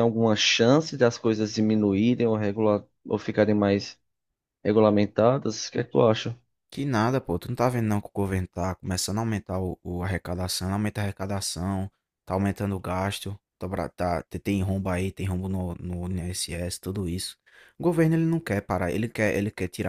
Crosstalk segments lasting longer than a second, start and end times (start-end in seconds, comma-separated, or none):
none